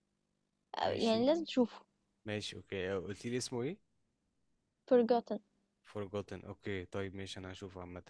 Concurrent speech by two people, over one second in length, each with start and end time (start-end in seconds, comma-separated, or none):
none